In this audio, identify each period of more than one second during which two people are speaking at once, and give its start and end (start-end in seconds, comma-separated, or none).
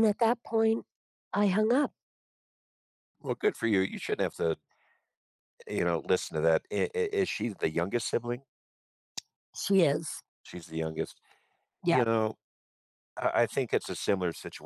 none